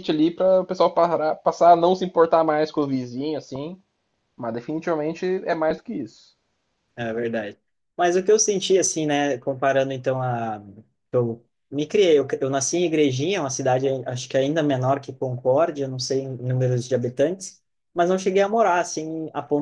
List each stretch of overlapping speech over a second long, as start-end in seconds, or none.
none